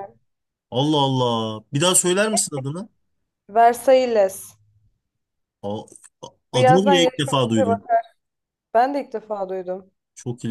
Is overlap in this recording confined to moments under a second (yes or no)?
no